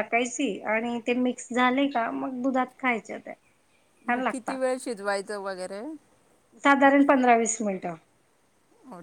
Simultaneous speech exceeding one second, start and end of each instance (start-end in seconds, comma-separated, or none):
none